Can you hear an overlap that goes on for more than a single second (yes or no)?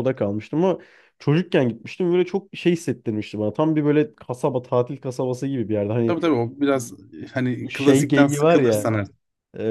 yes